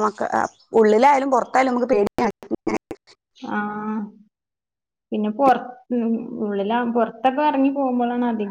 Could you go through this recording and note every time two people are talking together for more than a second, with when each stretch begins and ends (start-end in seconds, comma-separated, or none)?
none